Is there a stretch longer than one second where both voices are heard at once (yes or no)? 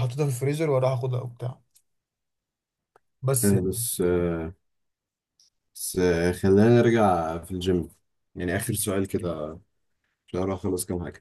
no